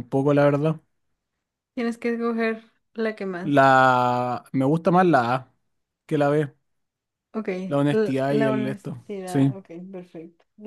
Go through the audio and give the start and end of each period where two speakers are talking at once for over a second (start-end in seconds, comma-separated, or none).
7.9-9.5